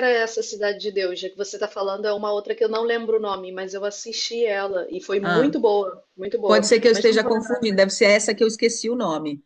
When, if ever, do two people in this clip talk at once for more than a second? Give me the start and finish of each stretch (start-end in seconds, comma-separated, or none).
6.5-7.8